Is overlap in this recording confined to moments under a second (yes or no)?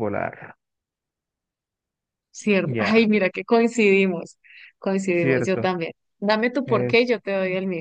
yes